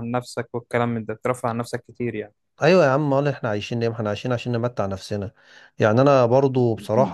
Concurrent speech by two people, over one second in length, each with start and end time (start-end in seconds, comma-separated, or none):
none